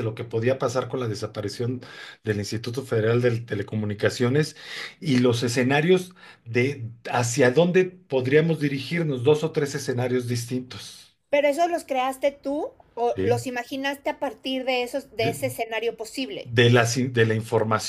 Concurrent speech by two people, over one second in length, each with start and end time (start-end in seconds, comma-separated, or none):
none